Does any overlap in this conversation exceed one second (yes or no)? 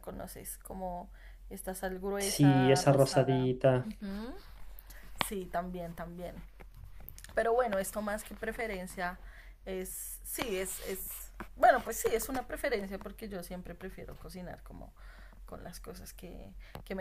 yes